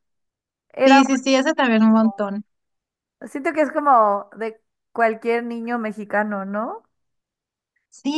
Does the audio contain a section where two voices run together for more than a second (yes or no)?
no